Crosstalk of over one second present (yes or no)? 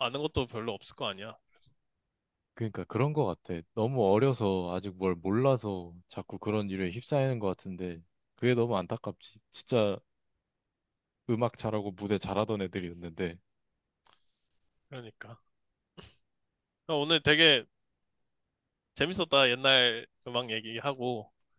no